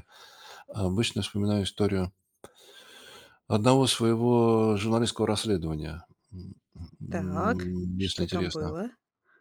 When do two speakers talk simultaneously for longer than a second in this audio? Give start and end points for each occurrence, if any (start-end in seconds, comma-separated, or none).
7.1-8.7